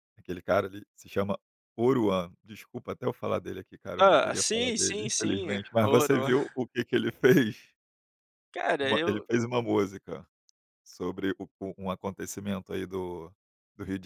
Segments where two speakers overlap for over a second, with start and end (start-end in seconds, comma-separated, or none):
4.0-6.3